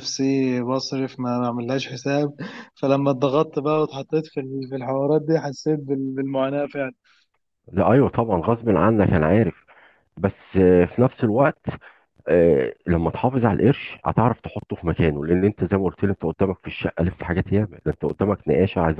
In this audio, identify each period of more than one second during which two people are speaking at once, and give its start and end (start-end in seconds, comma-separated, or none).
none